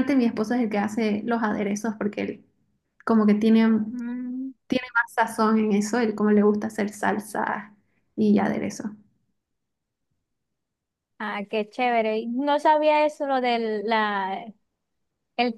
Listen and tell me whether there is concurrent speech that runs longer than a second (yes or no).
no